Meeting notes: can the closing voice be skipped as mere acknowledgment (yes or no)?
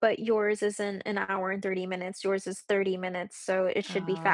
yes